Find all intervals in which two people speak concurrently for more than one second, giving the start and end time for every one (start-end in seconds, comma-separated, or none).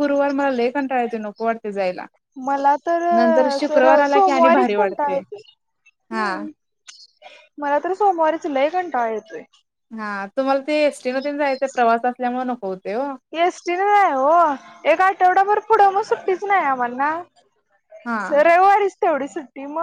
3.7-5.2